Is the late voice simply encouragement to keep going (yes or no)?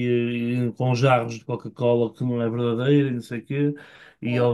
yes